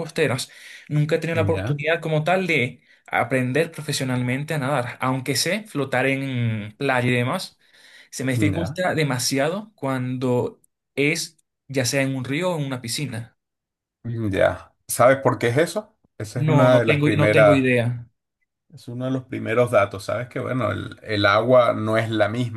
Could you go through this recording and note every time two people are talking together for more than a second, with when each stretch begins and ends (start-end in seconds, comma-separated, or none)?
16.4-17.6